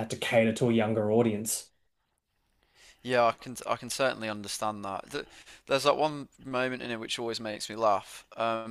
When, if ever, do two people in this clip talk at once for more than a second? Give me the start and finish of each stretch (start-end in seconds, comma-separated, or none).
none